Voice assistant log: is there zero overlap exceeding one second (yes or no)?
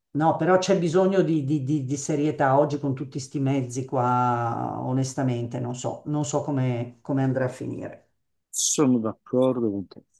yes